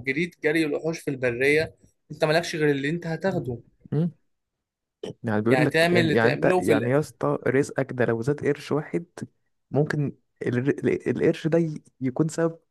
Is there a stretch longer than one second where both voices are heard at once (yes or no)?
yes